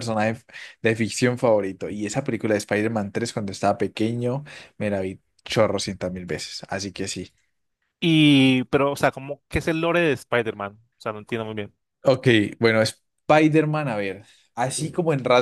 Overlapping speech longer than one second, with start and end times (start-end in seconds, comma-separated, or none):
none